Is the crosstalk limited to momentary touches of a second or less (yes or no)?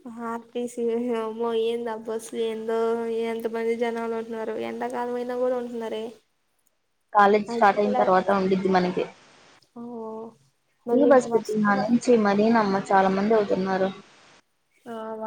no